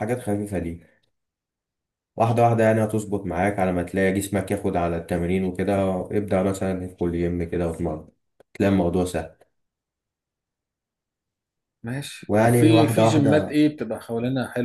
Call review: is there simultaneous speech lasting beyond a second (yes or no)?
yes